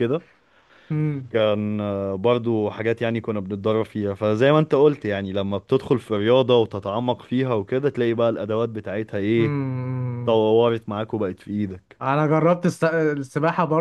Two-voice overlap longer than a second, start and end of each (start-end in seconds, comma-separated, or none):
none